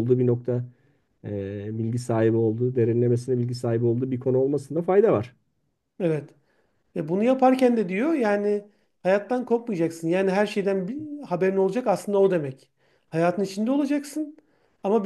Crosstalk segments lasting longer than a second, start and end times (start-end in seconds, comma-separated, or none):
none